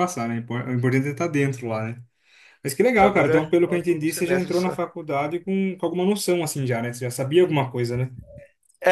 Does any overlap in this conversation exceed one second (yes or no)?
yes